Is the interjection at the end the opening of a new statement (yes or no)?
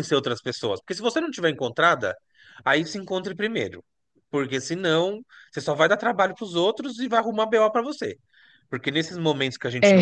no